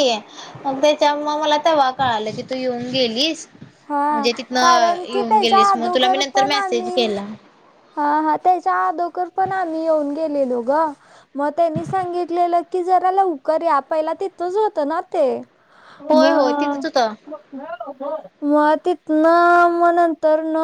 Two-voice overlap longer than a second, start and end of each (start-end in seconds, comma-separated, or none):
4.1-7.1